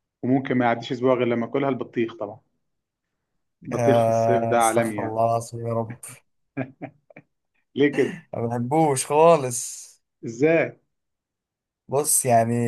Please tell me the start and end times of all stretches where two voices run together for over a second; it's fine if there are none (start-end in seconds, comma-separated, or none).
3.7-5.2